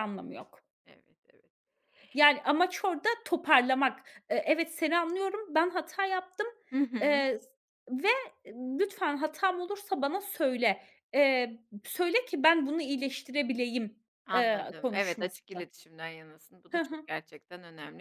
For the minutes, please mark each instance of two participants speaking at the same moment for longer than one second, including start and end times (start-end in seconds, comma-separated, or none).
14.3-15.7